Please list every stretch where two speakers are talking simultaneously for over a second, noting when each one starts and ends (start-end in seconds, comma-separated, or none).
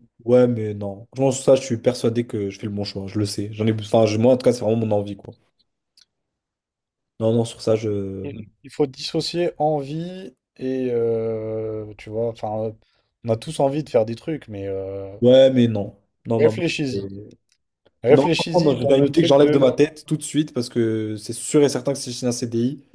18.1-19.7